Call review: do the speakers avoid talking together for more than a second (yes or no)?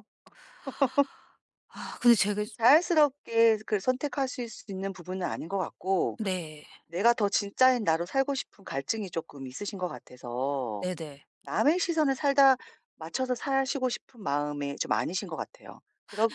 yes